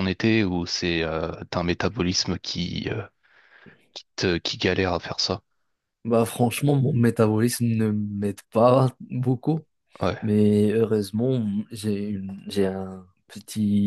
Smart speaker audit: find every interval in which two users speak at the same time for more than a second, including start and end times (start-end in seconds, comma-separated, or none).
none